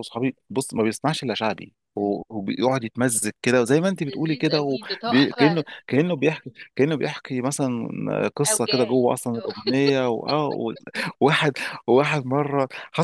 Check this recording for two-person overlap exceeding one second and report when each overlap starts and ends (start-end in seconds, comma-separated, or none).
4.0-5.6